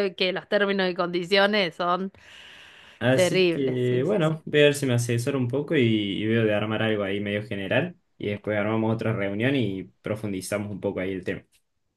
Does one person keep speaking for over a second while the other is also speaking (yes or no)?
yes